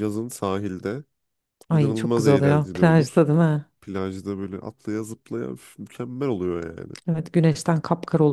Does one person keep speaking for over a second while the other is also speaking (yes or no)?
yes